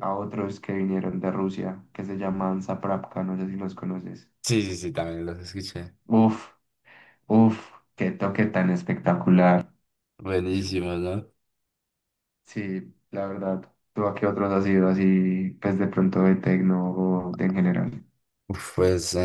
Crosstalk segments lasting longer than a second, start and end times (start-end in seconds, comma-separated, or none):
none